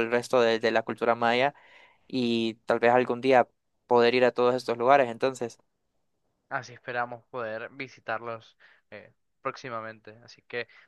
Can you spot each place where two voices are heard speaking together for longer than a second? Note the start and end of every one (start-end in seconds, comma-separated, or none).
none